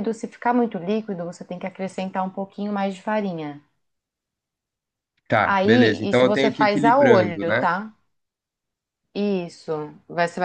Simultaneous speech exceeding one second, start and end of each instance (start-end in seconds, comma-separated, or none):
5.4-7.7